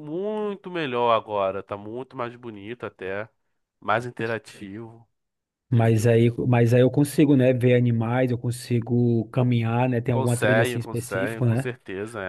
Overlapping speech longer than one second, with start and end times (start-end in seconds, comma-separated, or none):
10.1-11.7